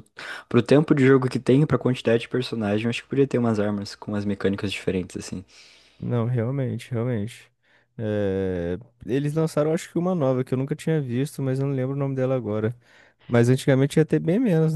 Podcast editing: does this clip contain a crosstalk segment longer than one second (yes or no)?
no